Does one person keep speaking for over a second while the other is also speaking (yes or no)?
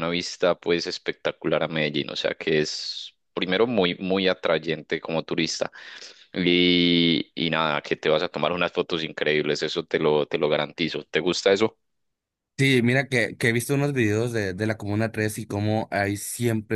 no